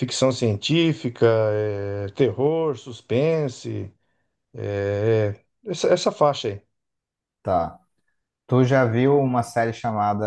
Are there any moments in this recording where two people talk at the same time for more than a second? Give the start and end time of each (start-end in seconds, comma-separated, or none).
none